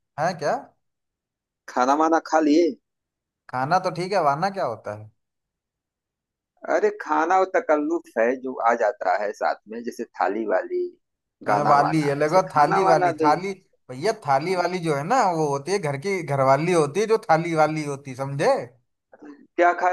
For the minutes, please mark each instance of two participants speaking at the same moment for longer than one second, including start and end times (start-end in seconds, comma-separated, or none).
11.5-13.3